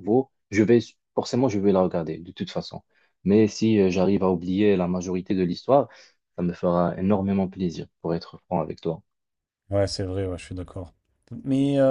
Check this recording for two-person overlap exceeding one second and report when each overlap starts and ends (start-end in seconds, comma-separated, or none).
none